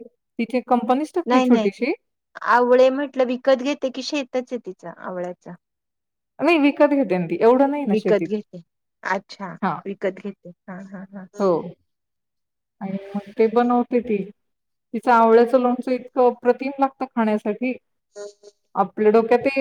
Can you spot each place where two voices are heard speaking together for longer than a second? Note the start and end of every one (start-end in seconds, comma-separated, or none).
none